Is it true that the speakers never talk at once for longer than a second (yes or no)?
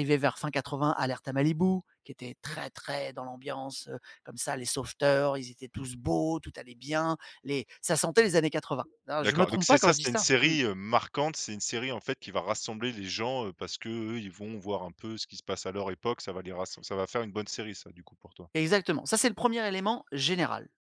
no